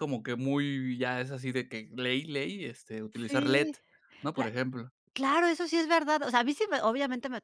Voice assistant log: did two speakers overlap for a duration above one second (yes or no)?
no